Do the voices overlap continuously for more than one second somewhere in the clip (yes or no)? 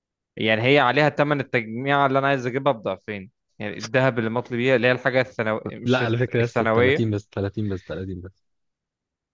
yes